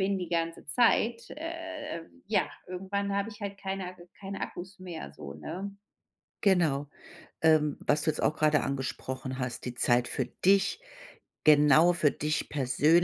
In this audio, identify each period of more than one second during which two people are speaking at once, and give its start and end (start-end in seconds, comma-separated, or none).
none